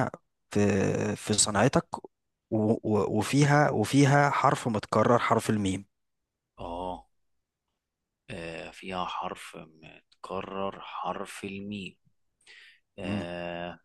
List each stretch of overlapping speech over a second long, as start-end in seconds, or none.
none